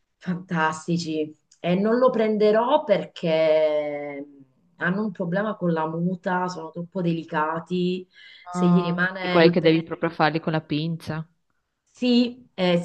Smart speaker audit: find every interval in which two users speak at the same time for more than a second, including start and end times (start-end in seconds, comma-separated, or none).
8.5-9.8